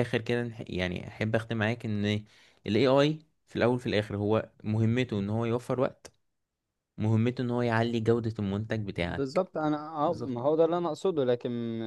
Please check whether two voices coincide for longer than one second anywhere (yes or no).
no